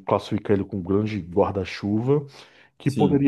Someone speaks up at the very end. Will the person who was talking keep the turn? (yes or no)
yes